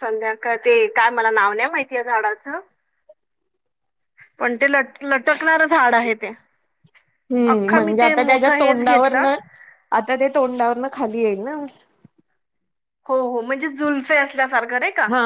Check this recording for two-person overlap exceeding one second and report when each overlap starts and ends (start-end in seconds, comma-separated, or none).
7.5-9.2